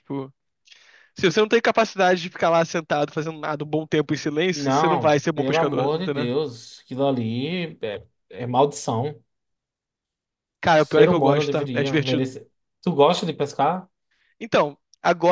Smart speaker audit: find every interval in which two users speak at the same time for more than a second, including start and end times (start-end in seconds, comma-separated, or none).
4.5-6.3, 10.7-12.3